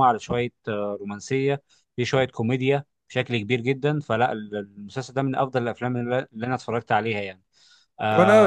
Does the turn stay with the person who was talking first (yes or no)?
no